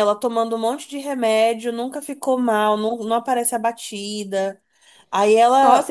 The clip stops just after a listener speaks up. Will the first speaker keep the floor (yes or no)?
no